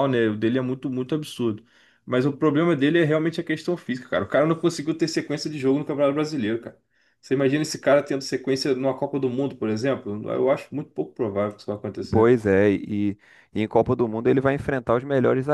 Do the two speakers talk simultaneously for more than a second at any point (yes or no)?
no